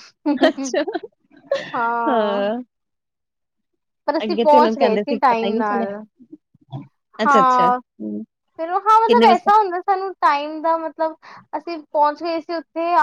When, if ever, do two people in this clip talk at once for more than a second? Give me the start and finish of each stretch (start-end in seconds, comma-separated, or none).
4.2-5.9